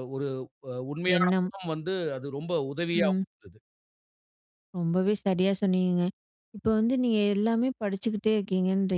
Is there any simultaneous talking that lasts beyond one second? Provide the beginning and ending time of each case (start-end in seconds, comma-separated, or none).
none